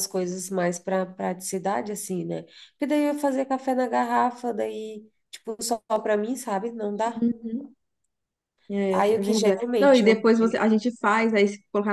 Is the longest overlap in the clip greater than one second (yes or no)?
yes